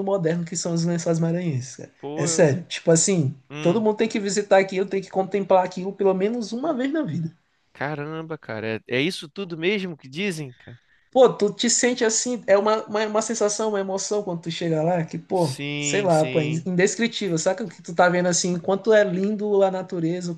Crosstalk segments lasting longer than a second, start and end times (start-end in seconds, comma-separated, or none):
15.3-16.6